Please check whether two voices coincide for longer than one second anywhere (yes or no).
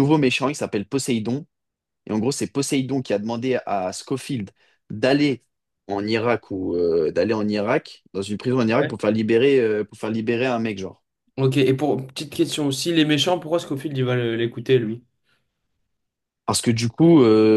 no